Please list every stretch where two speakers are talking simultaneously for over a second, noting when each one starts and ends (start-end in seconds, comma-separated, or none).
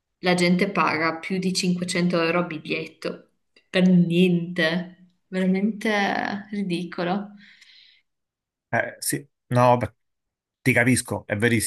none